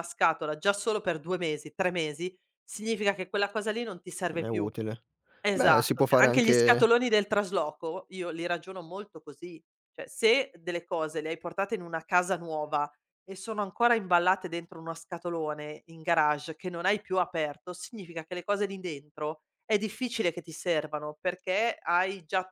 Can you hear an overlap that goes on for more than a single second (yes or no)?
yes